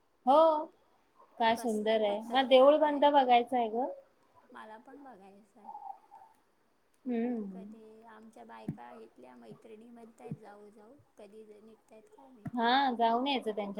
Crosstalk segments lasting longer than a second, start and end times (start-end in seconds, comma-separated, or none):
1.6-3.0